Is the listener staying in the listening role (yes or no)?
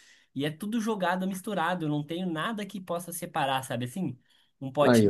yes